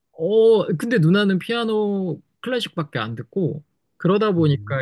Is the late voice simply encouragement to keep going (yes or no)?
yes